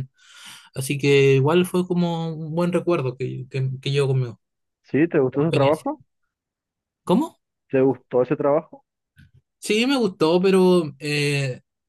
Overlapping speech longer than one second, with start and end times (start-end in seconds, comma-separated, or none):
none